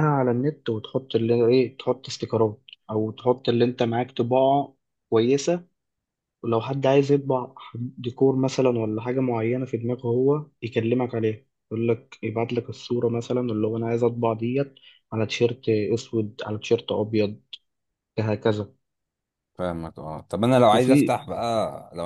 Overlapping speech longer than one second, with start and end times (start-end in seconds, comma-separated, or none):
none